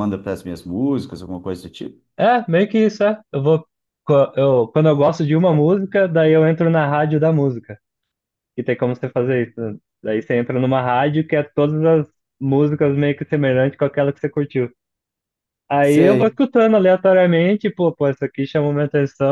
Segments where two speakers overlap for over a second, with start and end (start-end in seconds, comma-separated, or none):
none